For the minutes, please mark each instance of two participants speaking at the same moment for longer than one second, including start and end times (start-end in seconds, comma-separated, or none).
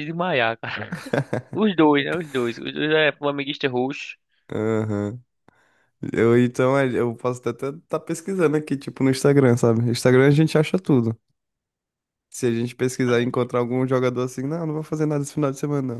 none